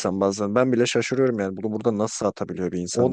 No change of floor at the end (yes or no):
no